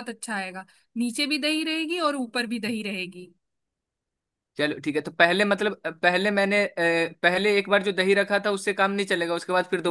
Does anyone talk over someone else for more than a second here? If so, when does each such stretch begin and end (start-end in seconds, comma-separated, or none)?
none